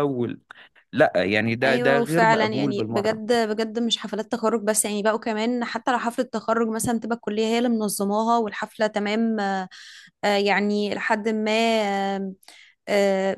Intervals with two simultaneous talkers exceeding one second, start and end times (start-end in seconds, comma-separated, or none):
1.6-3.2